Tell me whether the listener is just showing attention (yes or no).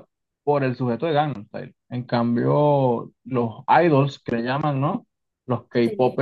yes